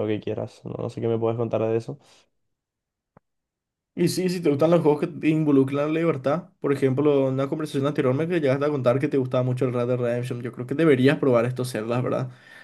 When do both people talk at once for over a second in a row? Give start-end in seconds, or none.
none